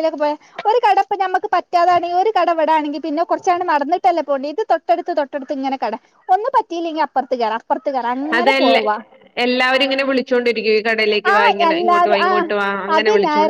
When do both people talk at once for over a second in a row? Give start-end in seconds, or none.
none